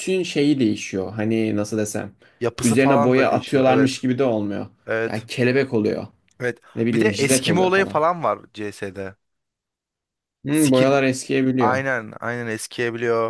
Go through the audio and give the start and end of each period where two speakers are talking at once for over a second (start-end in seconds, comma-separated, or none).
2.6-4.0, 6.7-8.0